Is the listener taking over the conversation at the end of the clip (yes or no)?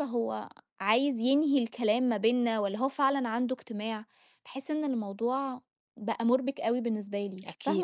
yes